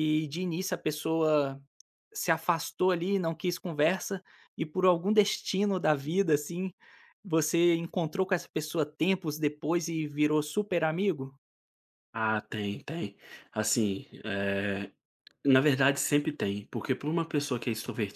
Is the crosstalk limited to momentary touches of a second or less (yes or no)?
yes